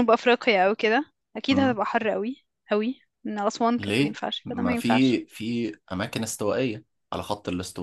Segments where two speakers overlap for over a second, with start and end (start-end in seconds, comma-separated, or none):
3.8-5.2